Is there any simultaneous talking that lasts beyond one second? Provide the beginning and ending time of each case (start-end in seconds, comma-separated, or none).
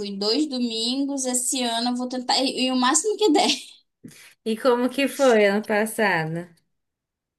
none